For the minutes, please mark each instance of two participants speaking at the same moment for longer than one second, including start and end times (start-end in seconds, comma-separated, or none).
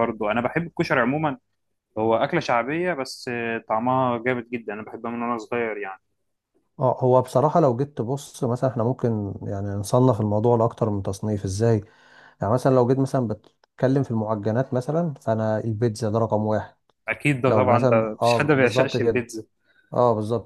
17.5-19.2